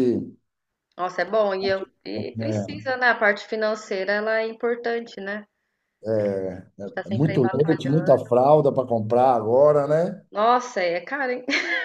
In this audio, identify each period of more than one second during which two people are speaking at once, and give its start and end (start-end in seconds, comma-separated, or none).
7.1-8.3